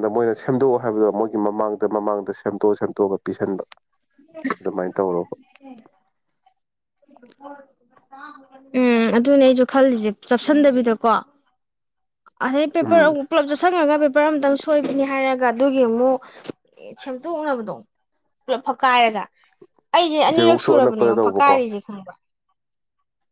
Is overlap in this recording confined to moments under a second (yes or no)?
no